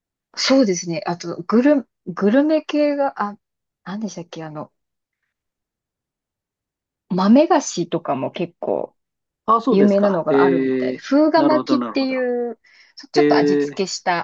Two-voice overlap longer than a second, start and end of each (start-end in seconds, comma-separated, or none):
9.7-12.2